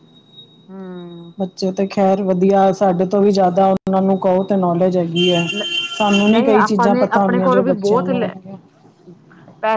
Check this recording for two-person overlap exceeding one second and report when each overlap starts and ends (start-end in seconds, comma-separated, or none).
6.3-8.3